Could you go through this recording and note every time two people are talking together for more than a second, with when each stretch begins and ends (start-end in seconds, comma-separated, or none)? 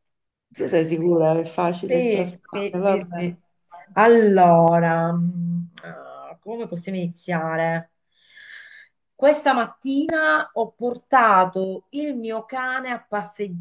1.9-3.4